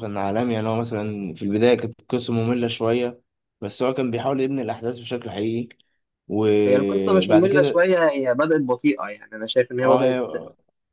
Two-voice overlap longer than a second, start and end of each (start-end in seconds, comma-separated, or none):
6.7-7.9